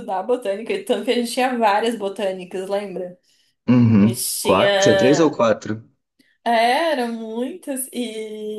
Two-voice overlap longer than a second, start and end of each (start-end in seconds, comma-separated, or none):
4.0-5.4